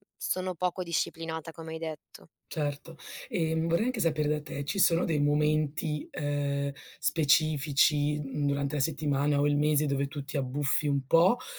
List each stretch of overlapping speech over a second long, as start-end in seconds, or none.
none